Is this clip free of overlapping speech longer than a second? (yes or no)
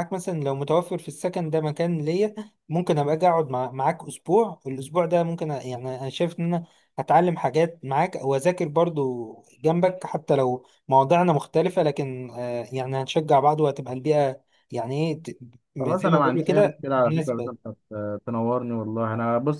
no